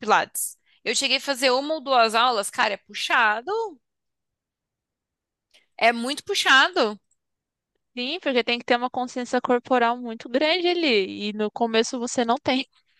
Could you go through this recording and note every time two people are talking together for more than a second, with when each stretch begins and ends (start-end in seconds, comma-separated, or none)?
none